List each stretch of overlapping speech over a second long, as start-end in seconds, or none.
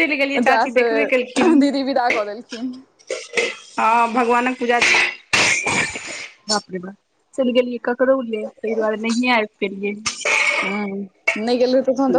none